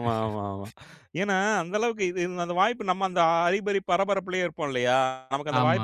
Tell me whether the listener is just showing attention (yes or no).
yes